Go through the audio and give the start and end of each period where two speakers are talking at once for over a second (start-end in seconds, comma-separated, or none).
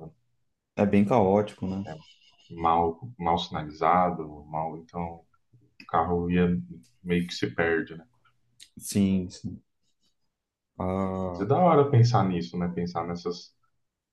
none